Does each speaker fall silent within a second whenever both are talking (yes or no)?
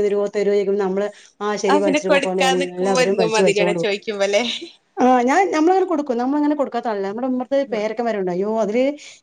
no